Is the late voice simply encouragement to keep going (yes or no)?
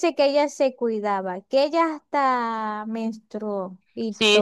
no